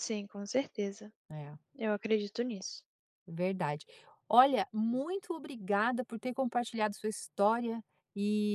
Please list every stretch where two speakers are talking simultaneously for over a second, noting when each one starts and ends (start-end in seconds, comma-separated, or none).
none